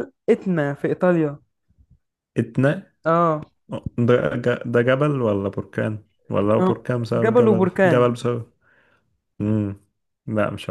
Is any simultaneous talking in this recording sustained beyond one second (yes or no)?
yes